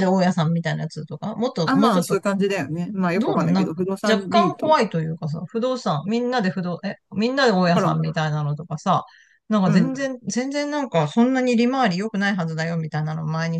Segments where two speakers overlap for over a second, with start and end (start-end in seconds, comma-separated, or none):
3.2-4.8